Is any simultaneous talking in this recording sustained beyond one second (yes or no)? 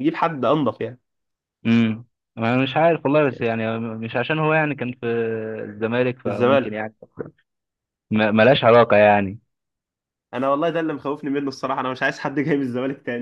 no